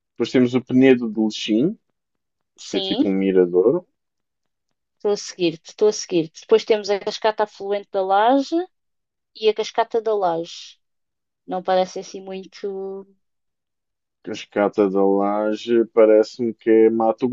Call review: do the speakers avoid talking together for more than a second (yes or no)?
yes